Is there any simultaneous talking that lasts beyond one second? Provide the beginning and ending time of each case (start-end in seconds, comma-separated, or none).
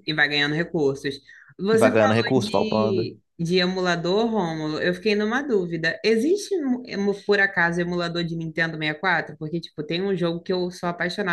1.7-3.2